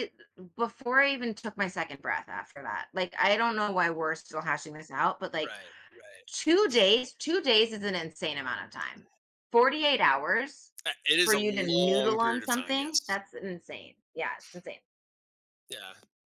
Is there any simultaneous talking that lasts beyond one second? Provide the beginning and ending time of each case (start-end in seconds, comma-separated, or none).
11.2-13.2